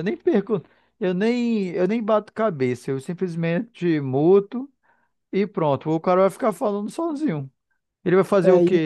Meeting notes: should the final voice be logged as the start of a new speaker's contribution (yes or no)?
no